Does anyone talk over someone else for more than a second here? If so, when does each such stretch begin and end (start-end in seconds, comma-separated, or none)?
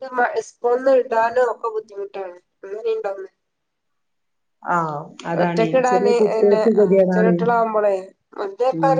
5.4-7.3